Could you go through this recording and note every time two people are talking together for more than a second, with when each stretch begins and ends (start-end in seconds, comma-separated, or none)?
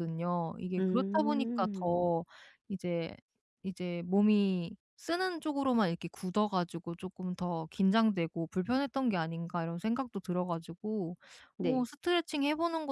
0.8-2.0